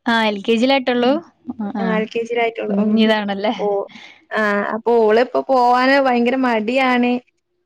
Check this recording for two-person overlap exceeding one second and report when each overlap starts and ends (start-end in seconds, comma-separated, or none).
none